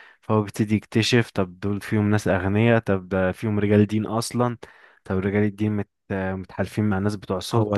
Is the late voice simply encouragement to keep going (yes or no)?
no